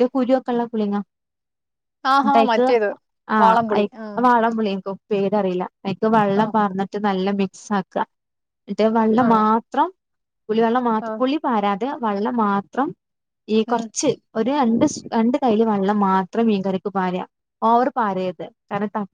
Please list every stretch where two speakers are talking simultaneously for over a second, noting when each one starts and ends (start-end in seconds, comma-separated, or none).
none